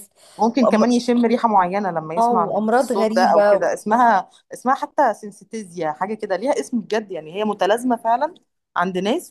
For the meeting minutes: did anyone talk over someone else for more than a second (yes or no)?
yes